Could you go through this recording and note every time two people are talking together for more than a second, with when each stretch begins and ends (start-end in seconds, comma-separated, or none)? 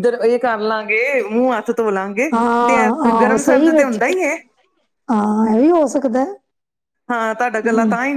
2.6-4.0